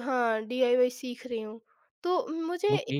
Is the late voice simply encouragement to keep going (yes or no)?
yes